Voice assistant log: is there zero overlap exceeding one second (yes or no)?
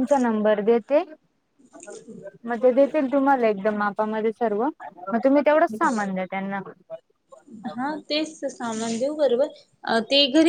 yes